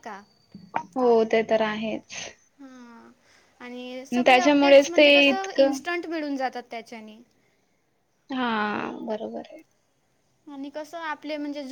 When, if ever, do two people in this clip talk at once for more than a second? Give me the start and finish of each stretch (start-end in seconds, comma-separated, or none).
4.3-5.8